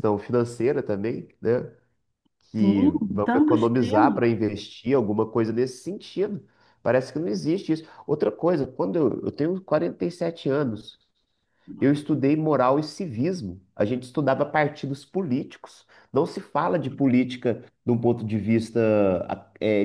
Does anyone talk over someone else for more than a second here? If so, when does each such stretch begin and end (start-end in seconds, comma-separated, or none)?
2.5-4.2